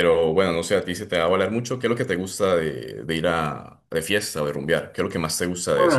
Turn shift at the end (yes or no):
yes